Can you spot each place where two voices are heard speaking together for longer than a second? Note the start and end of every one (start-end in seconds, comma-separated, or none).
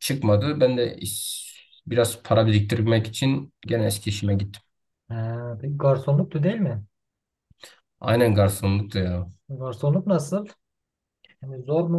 none